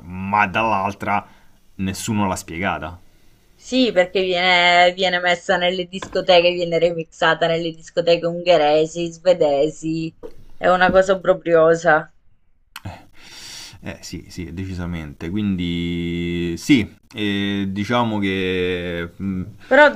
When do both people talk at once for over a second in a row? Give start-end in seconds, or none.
none